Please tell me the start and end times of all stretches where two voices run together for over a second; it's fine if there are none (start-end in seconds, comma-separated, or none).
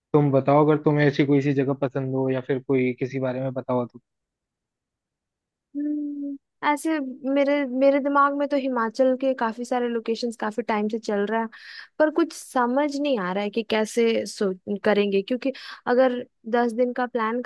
none